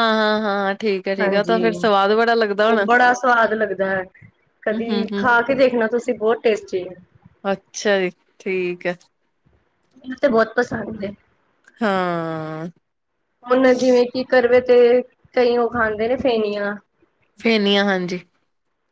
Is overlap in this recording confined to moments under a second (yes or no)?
yes